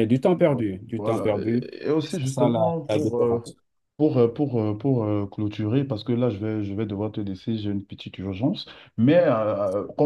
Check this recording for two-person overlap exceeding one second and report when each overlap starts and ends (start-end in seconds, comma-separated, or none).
1.0-3.4